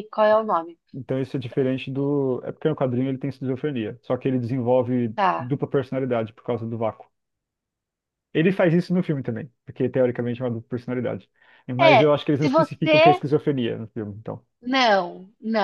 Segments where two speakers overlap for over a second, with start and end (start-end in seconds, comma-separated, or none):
11.8-13.2